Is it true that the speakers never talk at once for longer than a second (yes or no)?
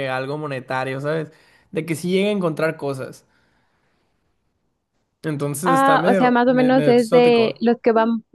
no